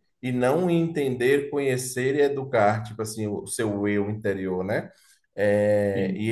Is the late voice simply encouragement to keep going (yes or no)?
yes